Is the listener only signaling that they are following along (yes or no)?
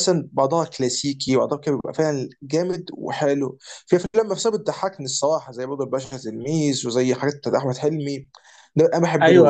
no